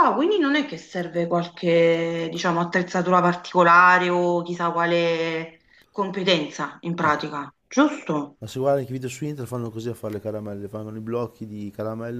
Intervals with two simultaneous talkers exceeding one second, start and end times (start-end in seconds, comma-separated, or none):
none